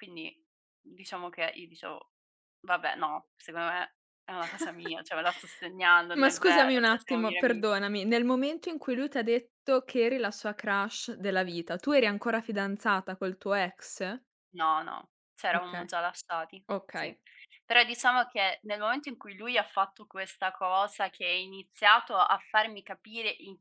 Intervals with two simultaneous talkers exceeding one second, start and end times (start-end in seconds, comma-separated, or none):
6.1-7.7